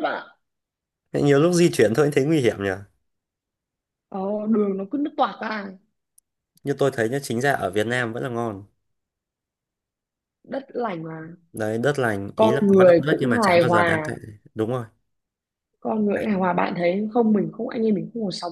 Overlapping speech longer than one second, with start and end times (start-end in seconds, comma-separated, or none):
12.3-14.1